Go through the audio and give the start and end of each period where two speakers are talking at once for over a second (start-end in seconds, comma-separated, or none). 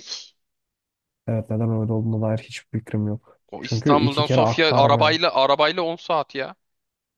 3.5-5.2